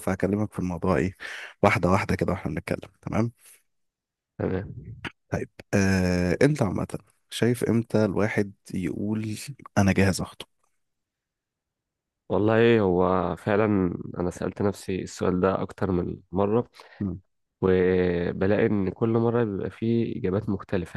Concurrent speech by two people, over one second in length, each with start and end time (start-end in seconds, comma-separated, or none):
none